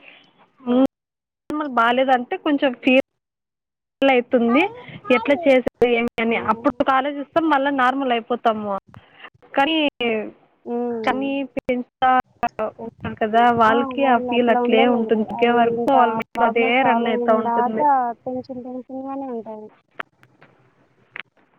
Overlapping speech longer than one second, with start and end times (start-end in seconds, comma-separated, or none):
14.0-17.8